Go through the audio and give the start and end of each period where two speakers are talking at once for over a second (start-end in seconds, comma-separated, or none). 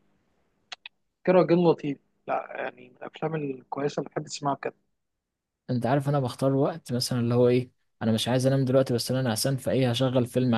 none